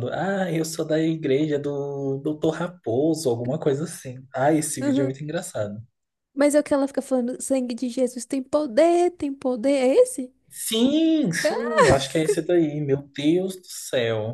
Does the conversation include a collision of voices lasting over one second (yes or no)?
no